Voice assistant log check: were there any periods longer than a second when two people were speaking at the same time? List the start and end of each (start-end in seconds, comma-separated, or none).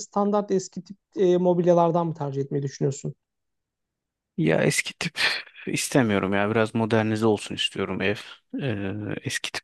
none